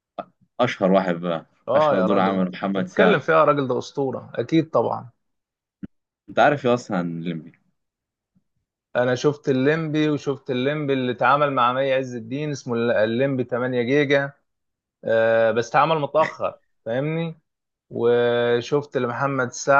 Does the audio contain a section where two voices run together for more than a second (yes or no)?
yes